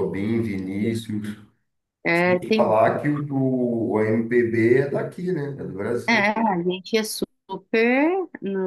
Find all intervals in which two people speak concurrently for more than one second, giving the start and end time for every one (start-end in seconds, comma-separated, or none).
none